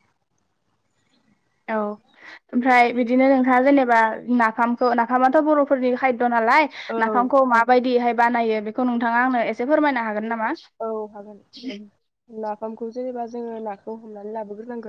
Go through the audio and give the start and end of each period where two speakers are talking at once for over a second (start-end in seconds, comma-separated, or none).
none